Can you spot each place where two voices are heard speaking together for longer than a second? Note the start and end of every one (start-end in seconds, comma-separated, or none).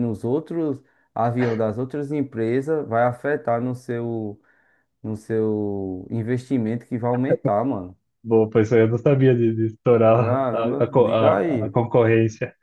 10.1-11.8